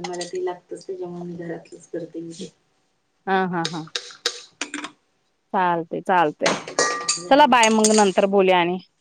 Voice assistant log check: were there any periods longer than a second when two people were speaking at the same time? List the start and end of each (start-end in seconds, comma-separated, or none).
none